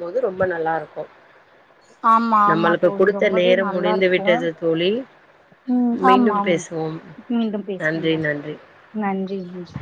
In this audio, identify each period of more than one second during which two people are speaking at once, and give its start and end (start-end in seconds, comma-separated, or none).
2.5-4.3